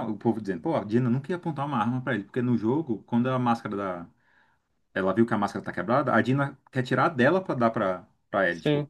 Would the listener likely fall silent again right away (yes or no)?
yes